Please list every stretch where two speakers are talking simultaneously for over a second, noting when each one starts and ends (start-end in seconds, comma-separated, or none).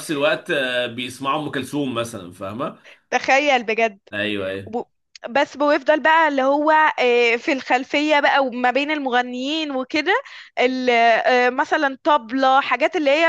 none